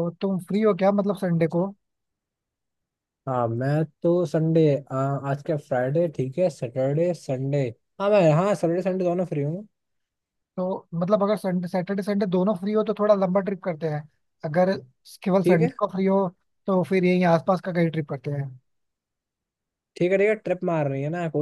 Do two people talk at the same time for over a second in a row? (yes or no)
no